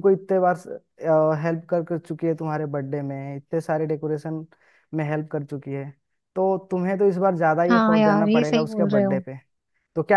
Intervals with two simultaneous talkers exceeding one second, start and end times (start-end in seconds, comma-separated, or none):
7.7-9.2